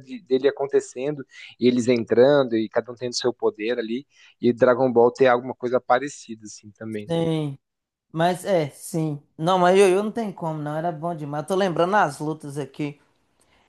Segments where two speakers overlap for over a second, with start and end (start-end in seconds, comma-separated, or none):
none